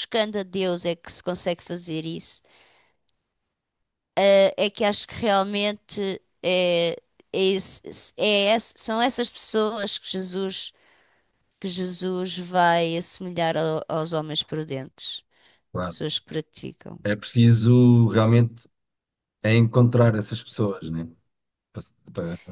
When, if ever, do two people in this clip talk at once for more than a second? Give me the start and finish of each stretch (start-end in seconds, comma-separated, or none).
none